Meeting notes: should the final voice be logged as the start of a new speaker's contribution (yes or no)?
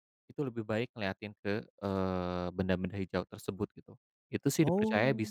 no